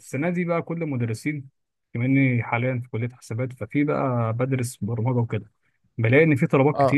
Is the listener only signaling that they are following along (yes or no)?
yes